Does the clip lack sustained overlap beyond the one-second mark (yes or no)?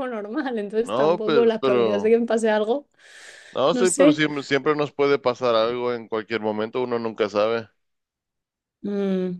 no